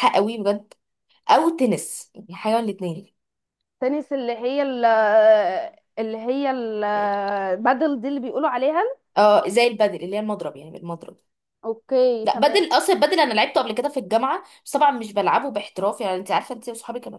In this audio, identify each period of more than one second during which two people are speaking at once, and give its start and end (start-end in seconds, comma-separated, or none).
none